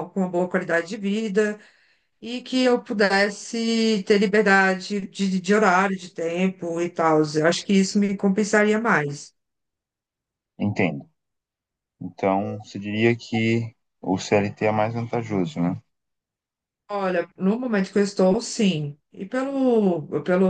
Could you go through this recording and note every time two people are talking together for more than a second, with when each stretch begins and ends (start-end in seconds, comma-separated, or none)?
none